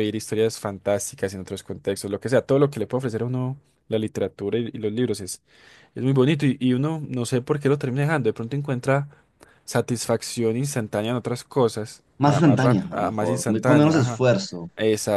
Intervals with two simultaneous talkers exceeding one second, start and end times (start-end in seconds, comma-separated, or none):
12.2-14.2